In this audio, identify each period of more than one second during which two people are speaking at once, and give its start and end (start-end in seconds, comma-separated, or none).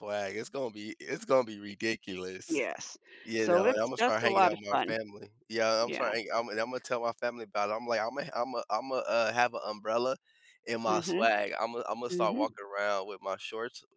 3.4-4.9